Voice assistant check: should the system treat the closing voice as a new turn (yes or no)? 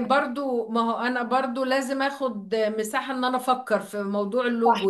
yes